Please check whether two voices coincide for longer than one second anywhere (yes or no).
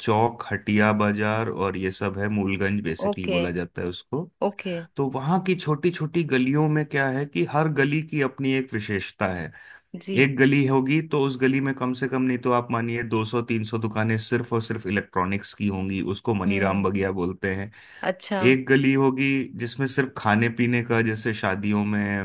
no